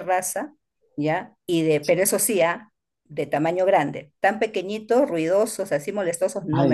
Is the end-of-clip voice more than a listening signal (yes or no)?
yes